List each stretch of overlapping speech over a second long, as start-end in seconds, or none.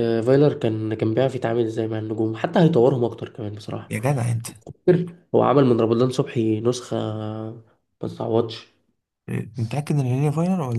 none